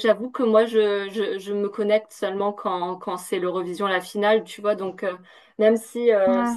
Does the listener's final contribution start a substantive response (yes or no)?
no